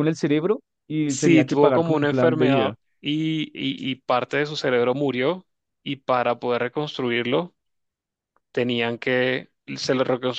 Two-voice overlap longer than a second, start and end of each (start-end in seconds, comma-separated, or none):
1.1-2.8